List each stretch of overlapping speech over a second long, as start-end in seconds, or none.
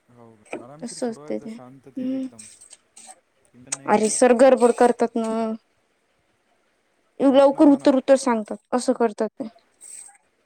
0.8-2.3